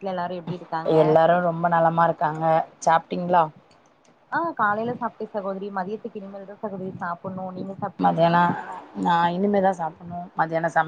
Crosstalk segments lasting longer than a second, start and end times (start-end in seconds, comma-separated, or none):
none